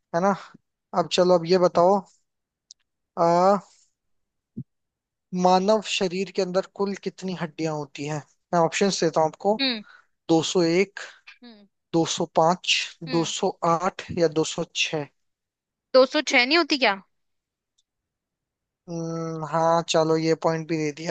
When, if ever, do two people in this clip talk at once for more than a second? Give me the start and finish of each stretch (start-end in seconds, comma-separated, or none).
none